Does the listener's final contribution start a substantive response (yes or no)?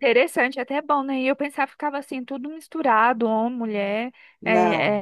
no